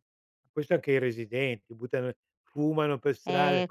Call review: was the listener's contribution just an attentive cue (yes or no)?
no